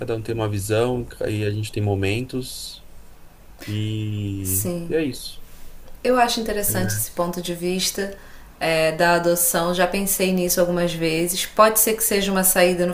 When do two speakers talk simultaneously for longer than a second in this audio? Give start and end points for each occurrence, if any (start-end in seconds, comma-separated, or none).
none